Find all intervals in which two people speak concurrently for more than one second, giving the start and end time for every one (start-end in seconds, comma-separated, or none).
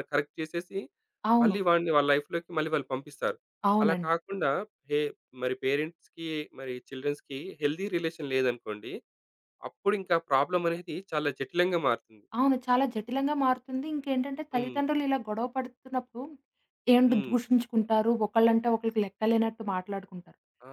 none